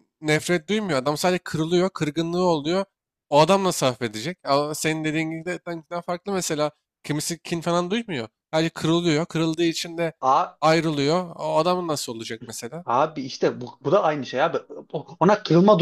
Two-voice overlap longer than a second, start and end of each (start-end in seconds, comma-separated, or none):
none